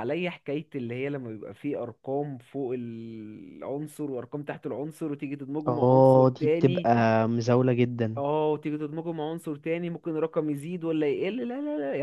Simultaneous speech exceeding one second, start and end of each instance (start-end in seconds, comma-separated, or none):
5.7-6.9